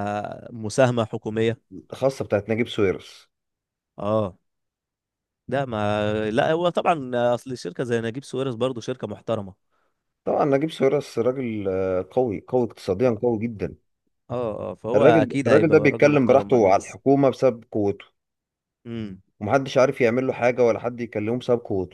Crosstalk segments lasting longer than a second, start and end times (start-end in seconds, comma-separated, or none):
14.9-17.0